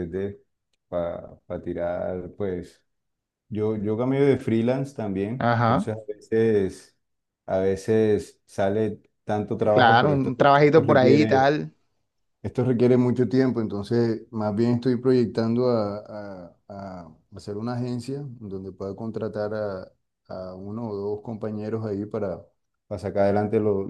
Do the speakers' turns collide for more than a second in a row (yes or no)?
yes